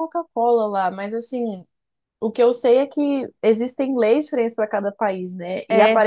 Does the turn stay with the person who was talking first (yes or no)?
yes